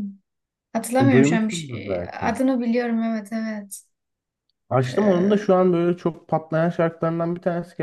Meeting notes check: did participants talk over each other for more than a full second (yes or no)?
yes